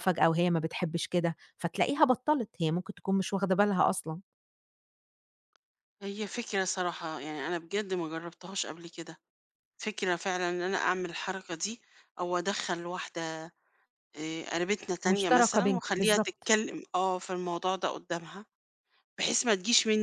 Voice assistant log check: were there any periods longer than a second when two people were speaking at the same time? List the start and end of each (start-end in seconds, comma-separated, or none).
15.0-16.5